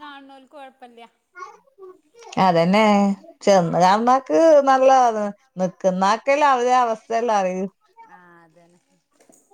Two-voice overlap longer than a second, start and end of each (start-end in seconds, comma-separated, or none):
none